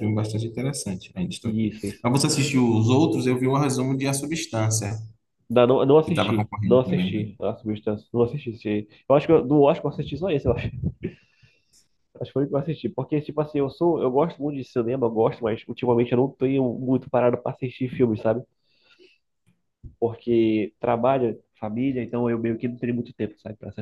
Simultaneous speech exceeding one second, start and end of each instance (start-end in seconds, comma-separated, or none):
6.0-7.2